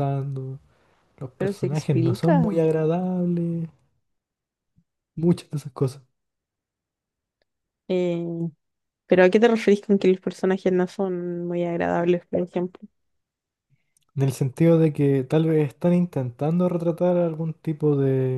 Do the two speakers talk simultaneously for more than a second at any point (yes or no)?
yes